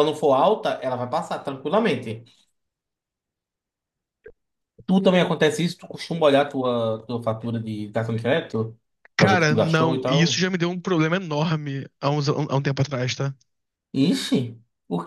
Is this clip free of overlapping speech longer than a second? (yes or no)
no